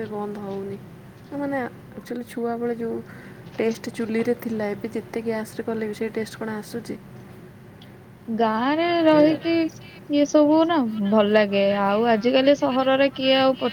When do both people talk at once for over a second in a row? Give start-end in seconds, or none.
none